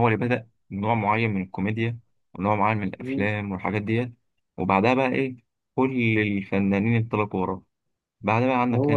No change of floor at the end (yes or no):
yes